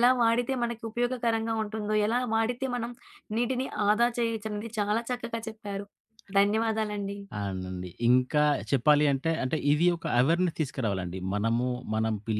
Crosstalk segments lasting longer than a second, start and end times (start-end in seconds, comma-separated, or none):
none